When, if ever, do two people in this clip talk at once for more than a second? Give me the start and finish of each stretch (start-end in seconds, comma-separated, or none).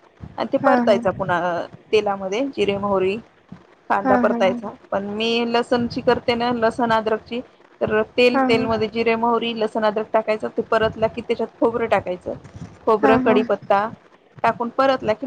none